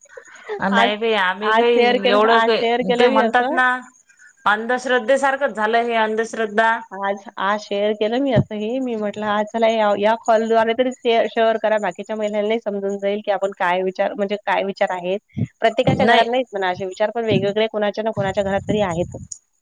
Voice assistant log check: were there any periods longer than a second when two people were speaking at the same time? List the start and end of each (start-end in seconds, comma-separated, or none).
1.5-3.6